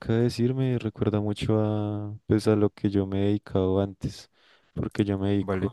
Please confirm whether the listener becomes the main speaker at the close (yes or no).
no